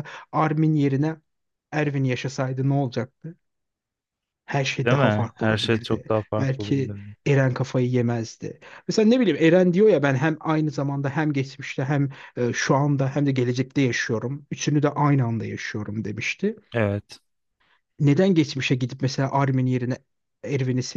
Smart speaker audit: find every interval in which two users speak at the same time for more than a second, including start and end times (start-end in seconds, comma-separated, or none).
4.8-7.2